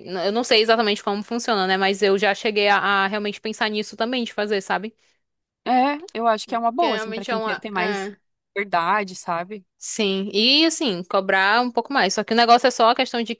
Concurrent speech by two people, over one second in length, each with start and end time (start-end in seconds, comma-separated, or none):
6.8-8.1